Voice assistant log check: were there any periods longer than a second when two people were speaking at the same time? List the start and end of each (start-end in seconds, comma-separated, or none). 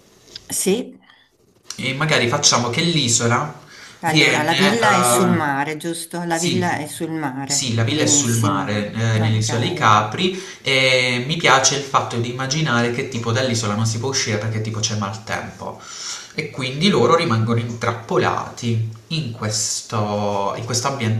4.0-5.5, 7.4-9.9